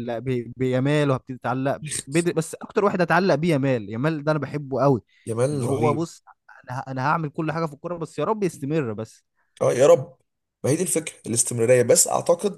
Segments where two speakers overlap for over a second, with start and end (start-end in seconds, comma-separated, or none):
none